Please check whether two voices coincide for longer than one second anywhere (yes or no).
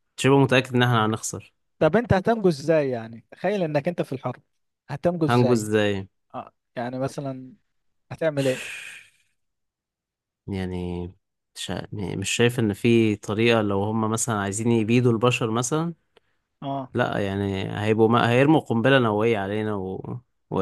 no